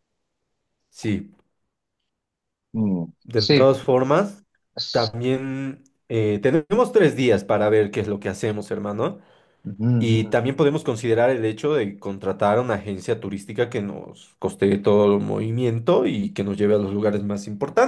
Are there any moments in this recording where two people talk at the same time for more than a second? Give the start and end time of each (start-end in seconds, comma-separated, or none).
none